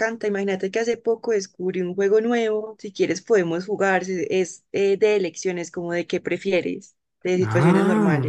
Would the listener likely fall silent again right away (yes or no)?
no